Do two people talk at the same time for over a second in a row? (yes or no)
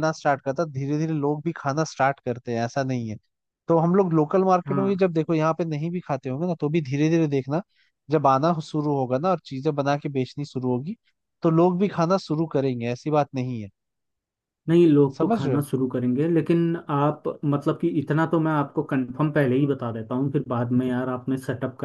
no